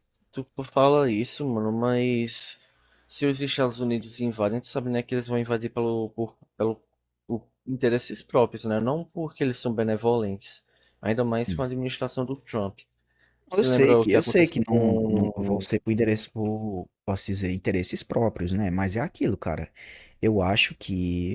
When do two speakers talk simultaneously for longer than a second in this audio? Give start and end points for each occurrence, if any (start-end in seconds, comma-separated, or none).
13.5-15.7